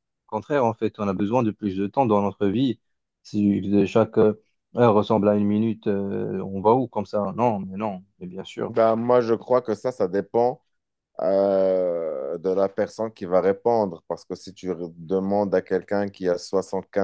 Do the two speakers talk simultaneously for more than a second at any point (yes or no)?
no